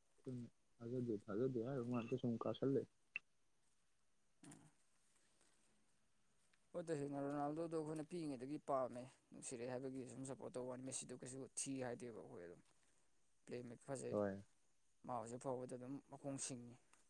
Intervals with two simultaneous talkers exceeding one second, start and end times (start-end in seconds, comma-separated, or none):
none